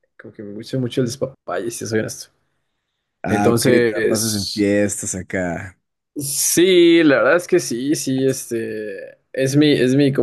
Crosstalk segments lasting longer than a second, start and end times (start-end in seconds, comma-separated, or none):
3.3-4.7